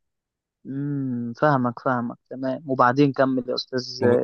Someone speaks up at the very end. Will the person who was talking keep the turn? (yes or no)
no